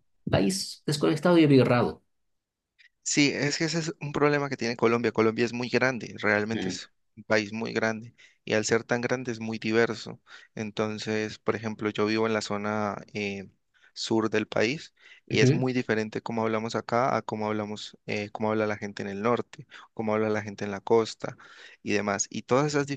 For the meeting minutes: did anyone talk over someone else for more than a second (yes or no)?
no